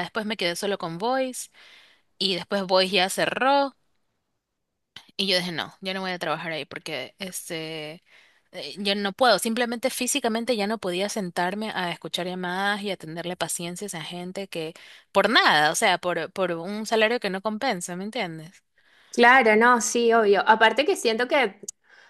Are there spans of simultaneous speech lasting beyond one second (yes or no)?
no